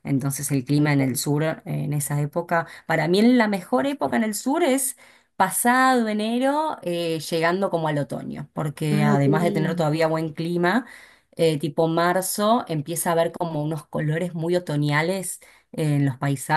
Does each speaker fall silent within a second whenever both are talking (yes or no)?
no